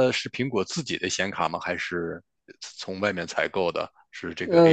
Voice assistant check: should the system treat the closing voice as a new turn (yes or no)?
yes